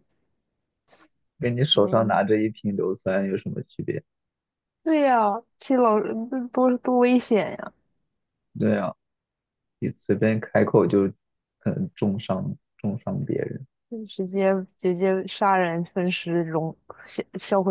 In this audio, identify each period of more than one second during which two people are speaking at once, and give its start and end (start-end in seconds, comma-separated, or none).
none